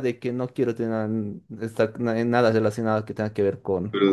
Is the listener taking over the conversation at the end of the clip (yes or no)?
yes